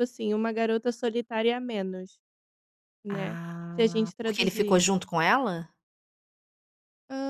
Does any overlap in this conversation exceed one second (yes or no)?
yes